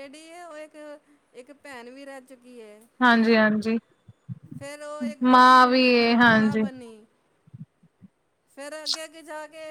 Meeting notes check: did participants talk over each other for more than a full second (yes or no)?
yes